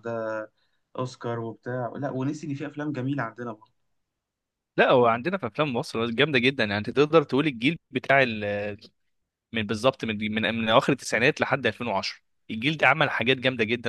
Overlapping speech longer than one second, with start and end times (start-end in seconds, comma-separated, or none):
none